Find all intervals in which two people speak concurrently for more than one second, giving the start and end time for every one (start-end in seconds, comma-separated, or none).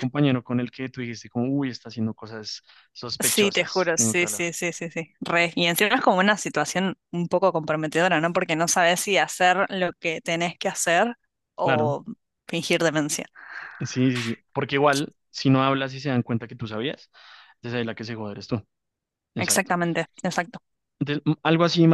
3.2-4.4